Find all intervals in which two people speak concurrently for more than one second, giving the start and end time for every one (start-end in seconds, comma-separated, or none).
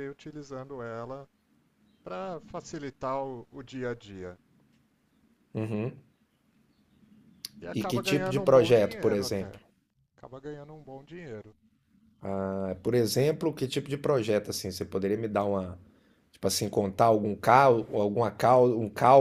7.7-9.6